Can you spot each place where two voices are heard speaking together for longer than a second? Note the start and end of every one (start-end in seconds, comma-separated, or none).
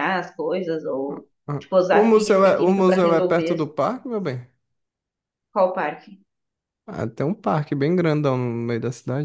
1.5-3.6